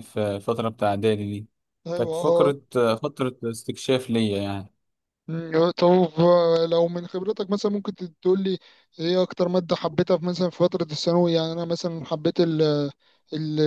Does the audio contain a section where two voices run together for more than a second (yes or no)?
no